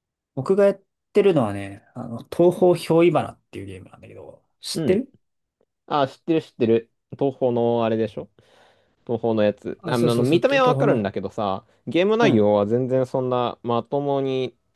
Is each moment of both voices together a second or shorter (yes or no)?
no